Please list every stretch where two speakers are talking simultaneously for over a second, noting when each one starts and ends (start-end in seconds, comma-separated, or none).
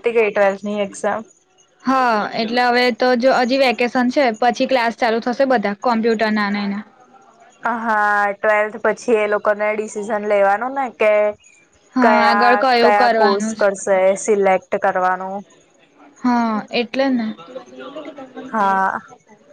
12.0-13.7